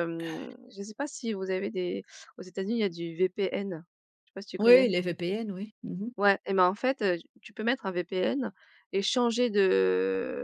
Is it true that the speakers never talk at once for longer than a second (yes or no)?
yes